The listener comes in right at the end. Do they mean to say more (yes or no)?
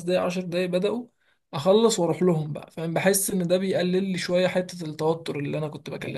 yes